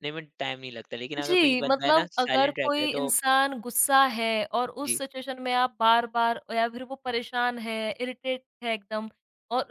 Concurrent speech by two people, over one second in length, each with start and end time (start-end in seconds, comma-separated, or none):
1.2-3.1